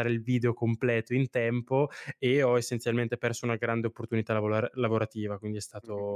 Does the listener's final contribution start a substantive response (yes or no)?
yes